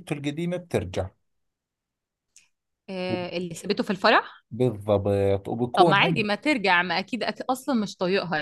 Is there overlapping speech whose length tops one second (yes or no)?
no